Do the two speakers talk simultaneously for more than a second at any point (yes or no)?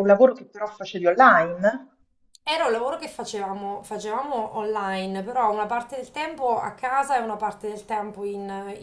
no